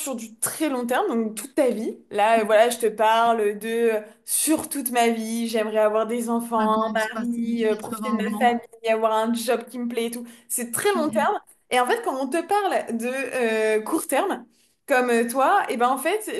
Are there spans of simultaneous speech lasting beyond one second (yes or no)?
yes